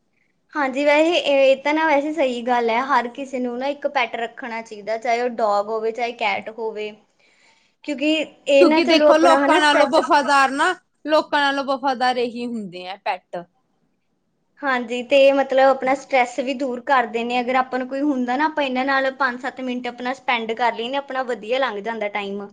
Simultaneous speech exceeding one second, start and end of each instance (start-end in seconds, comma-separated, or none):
8.6-10.0